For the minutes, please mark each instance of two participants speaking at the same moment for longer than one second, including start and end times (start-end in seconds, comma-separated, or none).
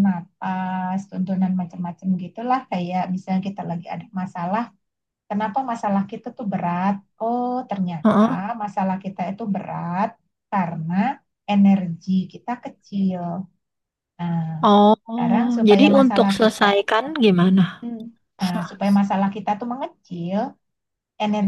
15.1-16.6